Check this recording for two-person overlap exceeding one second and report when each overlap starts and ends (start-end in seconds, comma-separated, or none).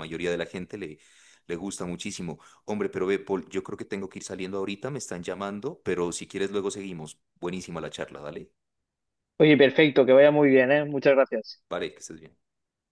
none